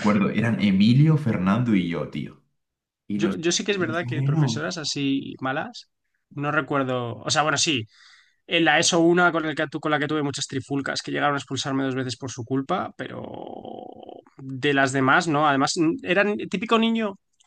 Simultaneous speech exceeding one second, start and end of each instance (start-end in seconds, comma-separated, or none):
3.1-4.6